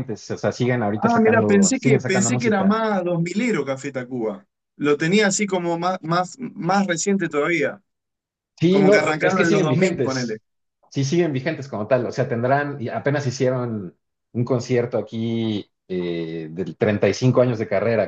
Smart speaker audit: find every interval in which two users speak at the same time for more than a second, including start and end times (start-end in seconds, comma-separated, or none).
1.0-2.8, 8.7-10.4